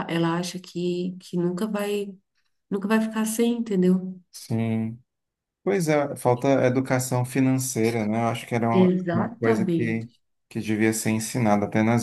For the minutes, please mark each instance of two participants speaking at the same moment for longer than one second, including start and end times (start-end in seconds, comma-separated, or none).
8.7-10.1